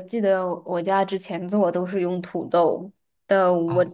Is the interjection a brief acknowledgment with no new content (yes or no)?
yes